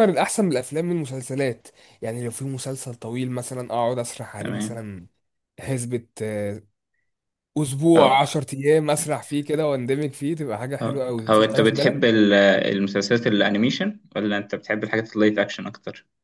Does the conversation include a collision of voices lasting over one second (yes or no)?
yes